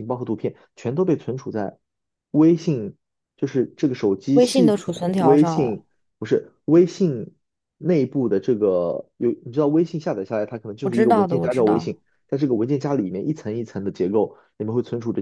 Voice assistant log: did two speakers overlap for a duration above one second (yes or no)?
yes